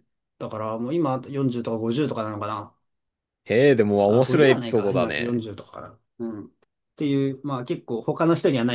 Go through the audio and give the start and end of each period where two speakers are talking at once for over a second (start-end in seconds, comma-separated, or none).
4.1-5.4